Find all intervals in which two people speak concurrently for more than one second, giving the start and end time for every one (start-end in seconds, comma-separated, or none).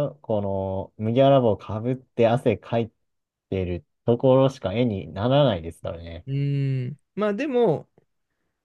none